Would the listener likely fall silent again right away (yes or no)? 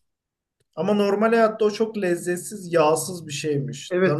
yes